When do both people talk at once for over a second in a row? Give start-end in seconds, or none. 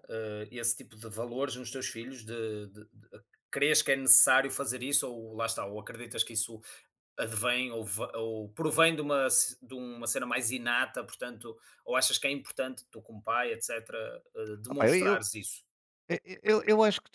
none